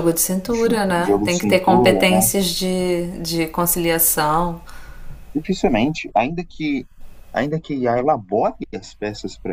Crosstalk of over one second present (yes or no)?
yes